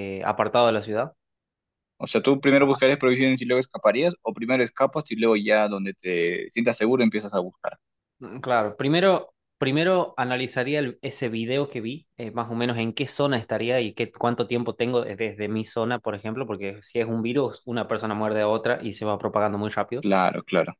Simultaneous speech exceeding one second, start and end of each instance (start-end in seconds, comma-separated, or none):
none